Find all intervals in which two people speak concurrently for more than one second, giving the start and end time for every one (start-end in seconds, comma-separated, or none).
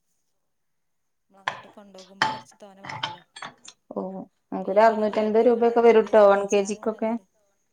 4.6-6.8